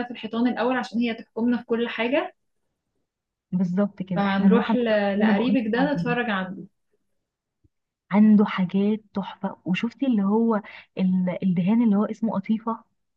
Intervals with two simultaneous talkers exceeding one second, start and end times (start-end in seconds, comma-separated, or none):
4.2-6.2